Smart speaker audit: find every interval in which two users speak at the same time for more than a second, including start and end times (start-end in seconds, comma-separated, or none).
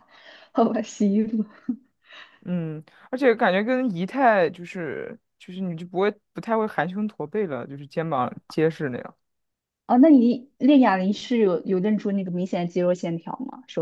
none